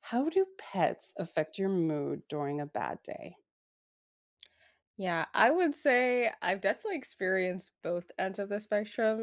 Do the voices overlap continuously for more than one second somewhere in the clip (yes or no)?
no